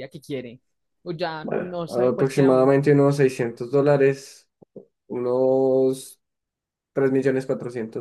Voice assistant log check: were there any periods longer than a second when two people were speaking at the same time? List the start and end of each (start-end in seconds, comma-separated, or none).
1.4-2.7